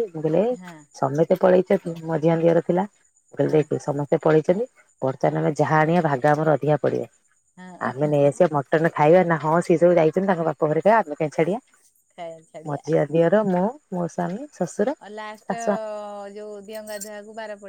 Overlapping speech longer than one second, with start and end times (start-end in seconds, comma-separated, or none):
none